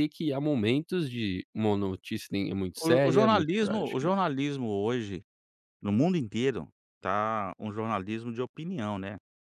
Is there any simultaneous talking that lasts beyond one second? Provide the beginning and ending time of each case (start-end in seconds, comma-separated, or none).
2.8-4.1